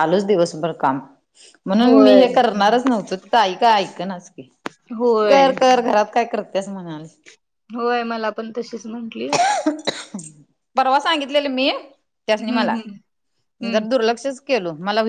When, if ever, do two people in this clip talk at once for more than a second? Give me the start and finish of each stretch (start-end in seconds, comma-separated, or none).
none